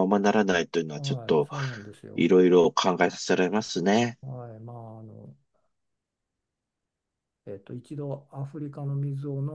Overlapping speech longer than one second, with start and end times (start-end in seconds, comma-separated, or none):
none